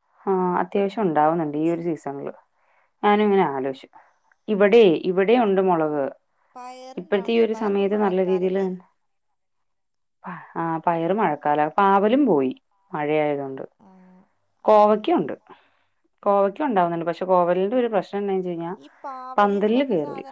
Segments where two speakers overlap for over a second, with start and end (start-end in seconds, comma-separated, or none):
7.0-8.7